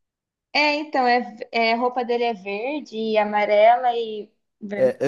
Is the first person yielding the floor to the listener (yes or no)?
yes